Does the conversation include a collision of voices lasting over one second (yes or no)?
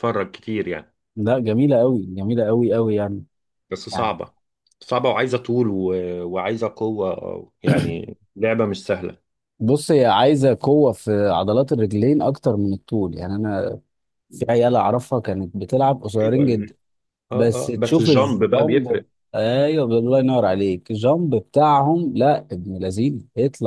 yes